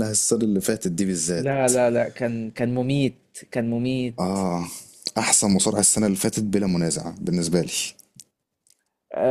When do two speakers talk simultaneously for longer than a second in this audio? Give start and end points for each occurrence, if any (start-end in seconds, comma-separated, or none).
none